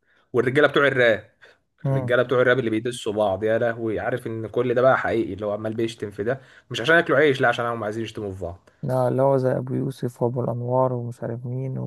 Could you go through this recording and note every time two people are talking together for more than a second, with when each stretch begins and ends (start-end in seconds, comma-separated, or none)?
none